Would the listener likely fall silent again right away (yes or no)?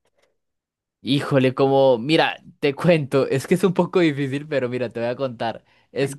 yes